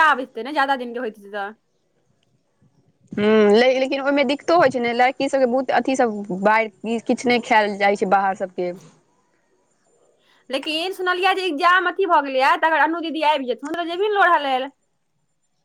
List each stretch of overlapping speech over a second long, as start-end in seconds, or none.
none